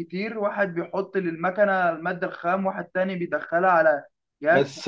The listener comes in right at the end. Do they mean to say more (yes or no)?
yes